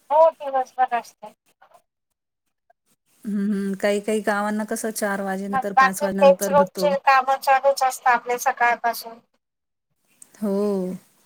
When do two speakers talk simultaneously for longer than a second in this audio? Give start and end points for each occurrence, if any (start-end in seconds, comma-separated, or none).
5.5-6.9